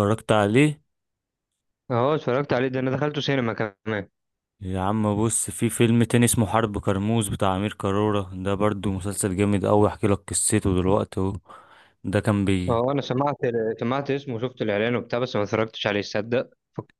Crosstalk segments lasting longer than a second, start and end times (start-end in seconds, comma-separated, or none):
none